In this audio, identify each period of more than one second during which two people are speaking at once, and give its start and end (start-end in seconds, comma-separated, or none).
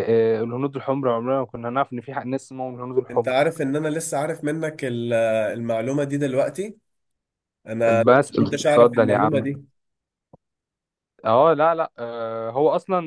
8.1-9.5